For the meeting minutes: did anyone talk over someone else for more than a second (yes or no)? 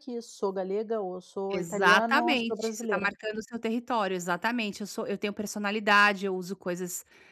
yes